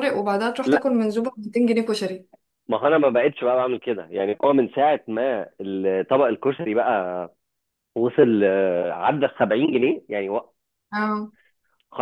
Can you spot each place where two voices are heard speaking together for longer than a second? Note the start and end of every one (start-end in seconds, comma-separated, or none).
none